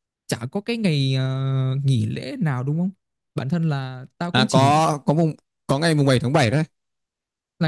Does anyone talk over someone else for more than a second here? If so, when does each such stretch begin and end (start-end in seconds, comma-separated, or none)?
none